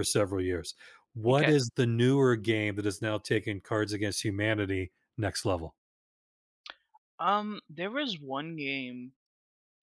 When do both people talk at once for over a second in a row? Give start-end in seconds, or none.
none